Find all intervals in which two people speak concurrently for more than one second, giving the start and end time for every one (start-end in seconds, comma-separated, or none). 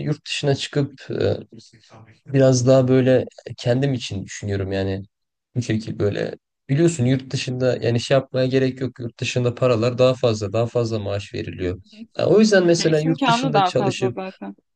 12.8-14.2